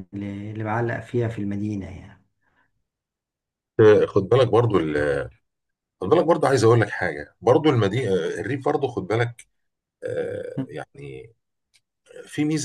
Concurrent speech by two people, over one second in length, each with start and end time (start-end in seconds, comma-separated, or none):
none